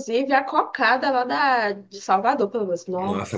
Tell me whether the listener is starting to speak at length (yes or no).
yes